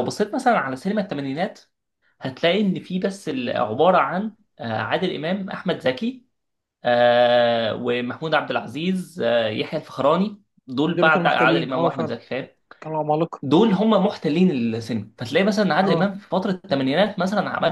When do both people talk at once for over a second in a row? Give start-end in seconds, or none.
10.9-12.2